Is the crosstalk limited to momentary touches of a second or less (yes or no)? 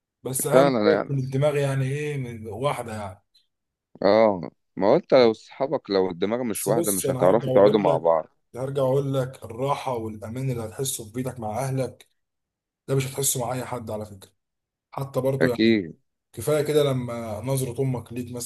no